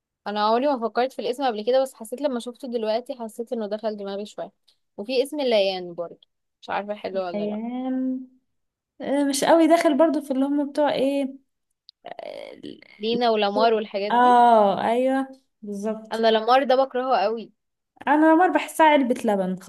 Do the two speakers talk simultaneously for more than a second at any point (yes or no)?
no